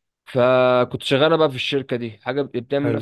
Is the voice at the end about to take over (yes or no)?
no